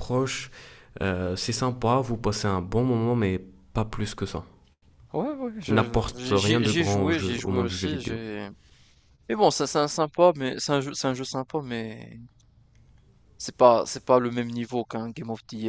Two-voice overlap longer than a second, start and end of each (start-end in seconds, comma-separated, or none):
5.7-8.2